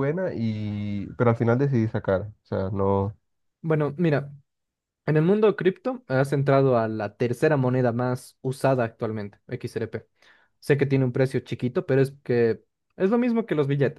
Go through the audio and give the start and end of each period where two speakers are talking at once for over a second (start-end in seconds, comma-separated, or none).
none